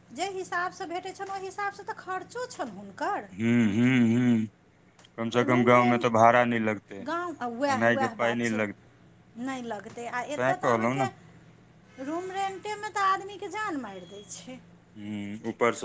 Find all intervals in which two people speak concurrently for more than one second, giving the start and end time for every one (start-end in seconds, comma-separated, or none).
none